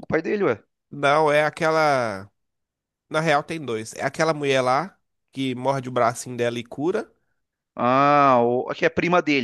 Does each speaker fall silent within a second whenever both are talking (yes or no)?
yes